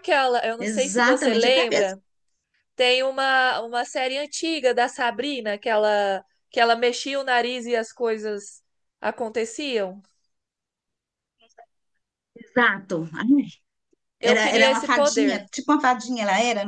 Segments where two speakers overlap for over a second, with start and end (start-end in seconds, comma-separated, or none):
0.6-2.0, 14.2-15.4